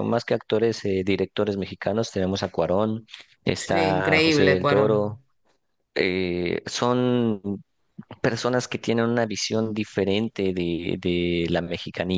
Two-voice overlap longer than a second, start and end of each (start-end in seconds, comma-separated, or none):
3.5-5.2